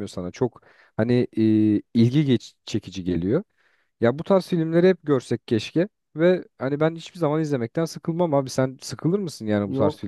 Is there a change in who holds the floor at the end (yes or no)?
yes